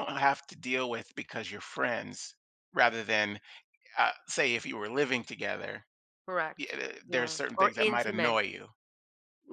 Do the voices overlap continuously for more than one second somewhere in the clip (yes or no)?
yes